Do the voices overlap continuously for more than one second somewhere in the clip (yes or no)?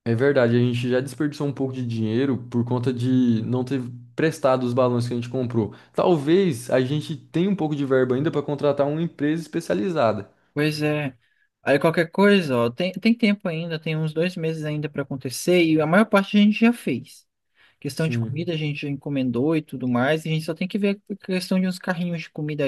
no